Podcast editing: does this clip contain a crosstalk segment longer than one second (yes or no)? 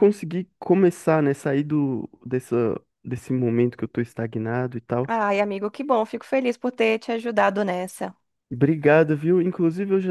no